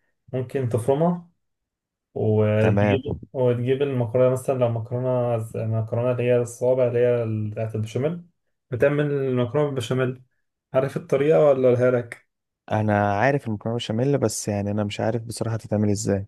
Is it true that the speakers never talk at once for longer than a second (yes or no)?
yes